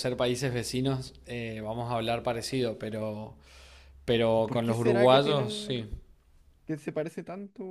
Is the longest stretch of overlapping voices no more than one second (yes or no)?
no